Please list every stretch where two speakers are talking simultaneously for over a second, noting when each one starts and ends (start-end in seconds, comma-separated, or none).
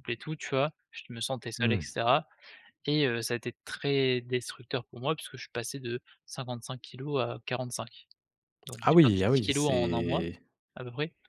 8.8-10.2